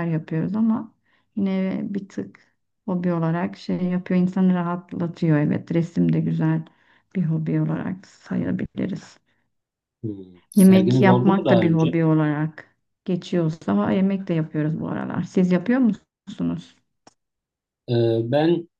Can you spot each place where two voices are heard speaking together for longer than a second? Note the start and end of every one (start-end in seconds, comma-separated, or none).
10.6-12.0